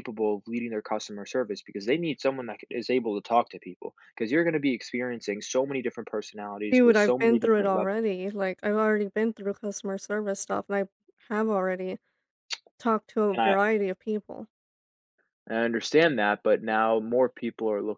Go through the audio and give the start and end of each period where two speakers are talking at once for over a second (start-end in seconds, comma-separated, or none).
6.7-8.0